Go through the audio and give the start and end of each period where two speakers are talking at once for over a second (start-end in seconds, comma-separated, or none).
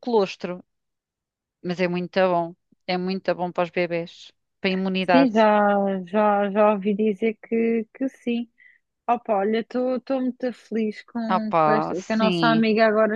11.3-12.7